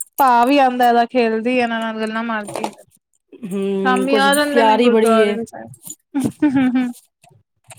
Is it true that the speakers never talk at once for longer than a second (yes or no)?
no